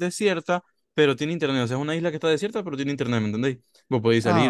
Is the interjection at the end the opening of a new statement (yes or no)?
yes